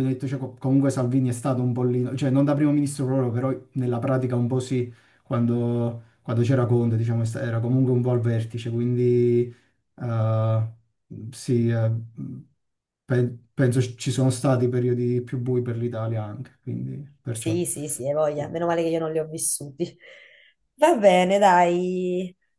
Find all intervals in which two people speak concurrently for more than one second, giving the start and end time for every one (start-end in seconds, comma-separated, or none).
none